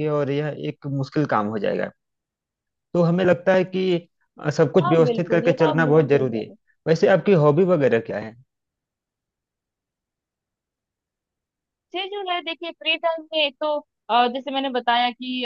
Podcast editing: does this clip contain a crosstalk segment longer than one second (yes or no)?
yes